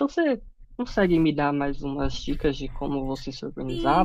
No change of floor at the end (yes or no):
no